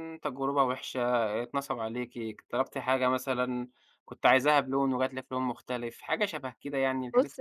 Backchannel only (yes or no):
no